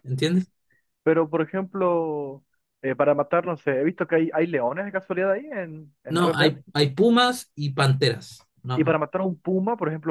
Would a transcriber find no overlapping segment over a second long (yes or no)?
yes